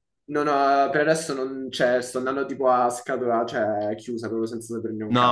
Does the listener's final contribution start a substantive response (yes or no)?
yes